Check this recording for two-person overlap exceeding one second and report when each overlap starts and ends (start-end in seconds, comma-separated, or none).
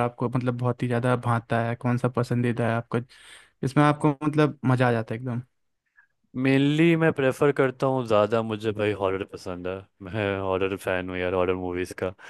none